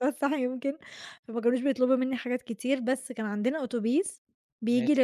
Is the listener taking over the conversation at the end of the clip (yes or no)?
no